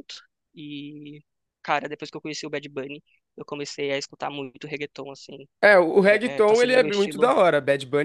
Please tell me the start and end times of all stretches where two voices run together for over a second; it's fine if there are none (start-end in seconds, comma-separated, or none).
6.0-7.3